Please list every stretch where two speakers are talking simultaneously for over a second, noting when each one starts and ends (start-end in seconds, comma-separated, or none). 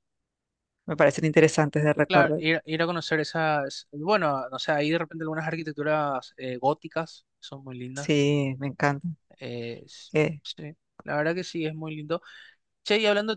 none